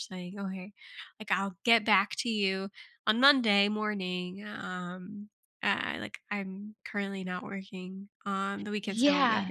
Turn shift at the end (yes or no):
yes